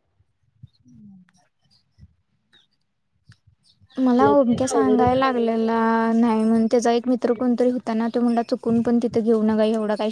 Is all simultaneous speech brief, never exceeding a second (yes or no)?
no